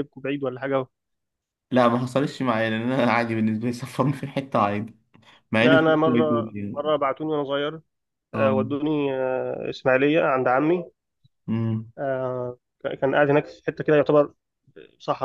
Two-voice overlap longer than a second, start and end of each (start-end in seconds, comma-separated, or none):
5.6-6.9